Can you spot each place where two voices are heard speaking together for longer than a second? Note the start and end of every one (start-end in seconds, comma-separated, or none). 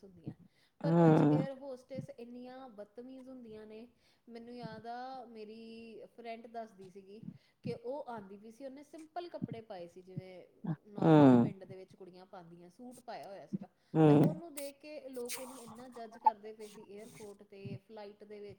none